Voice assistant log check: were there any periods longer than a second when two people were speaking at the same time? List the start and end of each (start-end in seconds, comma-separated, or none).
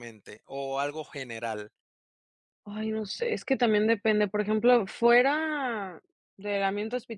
none